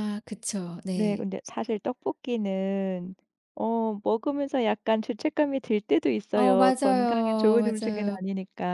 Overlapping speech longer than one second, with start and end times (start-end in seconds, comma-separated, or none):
6.3-8.2